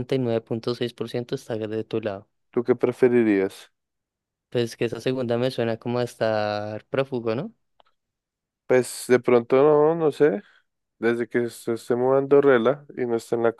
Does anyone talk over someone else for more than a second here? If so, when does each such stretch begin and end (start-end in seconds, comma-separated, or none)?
none